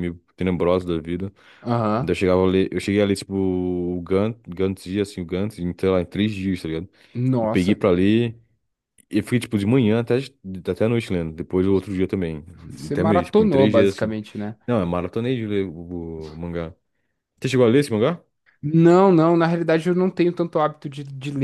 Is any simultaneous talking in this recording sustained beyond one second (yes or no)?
yes